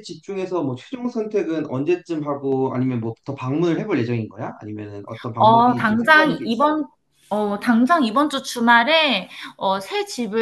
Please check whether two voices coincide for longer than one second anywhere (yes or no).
yes